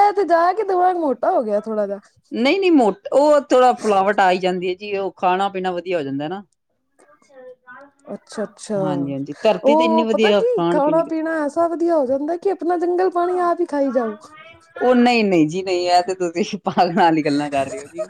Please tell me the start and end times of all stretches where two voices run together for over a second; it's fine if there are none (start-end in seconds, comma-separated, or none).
9.7-11.3